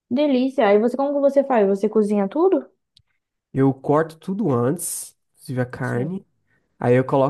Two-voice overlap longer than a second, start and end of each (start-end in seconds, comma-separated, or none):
none